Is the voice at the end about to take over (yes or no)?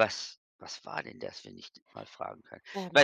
no